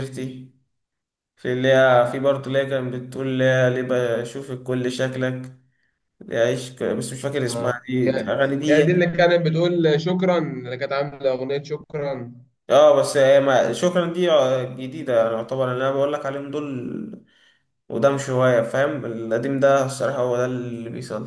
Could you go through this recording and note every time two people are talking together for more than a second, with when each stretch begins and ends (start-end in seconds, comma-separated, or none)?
7.5-9.1